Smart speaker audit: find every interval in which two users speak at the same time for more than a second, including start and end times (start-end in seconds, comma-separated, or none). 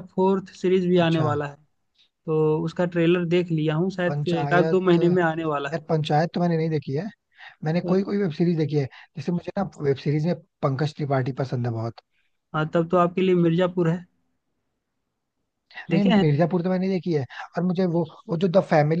4.1-5.4